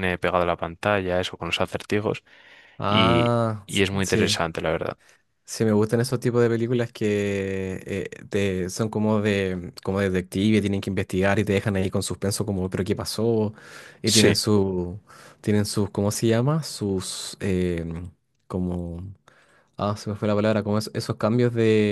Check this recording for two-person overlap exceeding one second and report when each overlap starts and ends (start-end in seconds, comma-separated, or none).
2.9-4.4